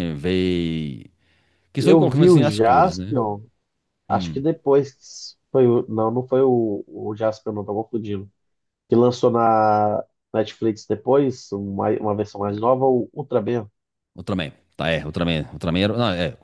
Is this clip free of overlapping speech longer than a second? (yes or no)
no